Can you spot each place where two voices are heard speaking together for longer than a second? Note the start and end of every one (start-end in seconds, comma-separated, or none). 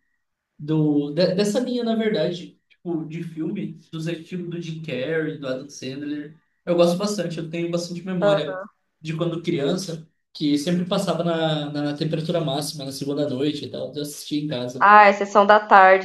none